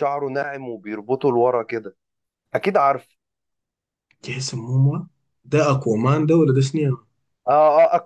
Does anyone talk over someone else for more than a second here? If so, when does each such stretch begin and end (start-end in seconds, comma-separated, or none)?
none